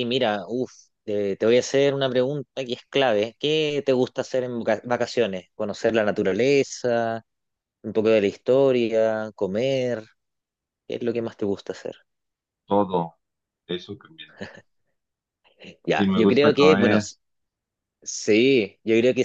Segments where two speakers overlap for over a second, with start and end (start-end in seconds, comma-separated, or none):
15.9-17.1